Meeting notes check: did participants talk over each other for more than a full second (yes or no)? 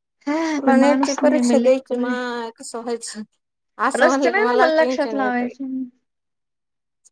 yes